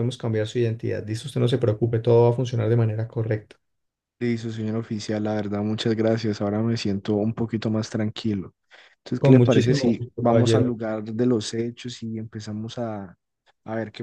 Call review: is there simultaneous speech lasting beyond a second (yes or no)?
yes